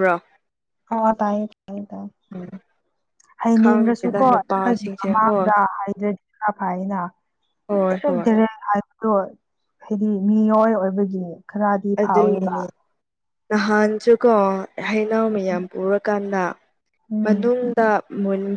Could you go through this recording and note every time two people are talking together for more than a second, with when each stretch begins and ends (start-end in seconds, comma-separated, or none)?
3.6-5.5